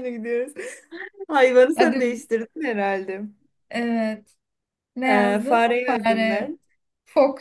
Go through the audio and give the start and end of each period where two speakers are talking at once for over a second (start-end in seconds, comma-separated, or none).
5.0-6.5